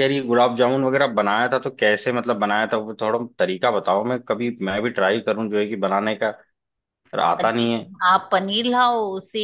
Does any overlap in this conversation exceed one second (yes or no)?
no